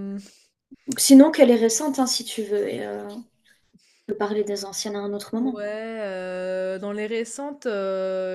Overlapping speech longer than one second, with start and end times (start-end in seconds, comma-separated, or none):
none